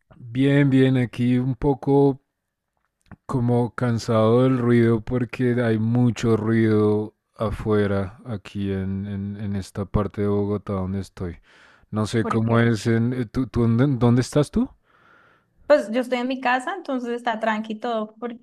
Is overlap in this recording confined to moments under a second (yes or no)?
yes